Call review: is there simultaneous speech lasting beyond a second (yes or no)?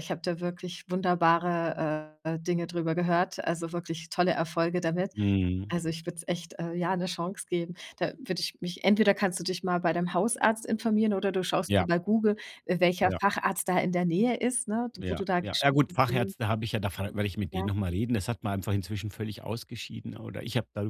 yes